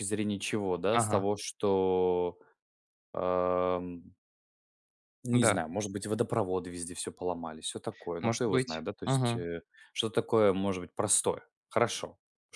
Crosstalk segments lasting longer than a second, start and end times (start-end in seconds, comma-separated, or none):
8.2-9.4